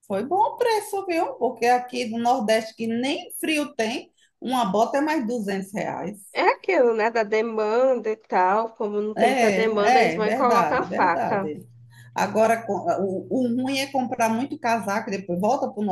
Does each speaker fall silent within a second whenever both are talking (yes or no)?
no